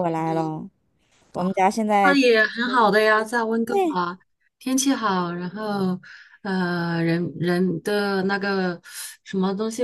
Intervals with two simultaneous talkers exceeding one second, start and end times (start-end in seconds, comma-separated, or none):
none